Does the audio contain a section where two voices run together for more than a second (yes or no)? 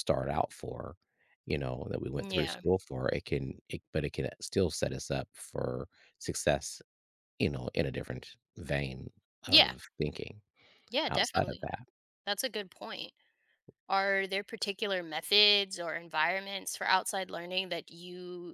no